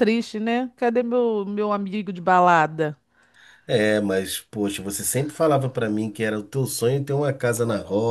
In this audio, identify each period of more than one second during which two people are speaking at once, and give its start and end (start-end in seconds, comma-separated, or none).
none